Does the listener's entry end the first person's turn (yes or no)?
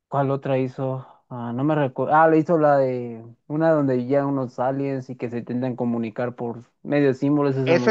yes